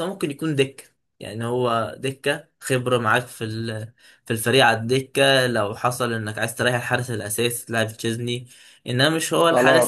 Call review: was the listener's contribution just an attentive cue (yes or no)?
no